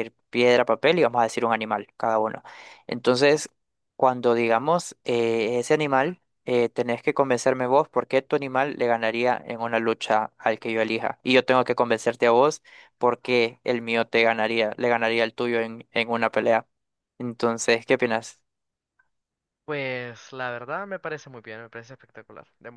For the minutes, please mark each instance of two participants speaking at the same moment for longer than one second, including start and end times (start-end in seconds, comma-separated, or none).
none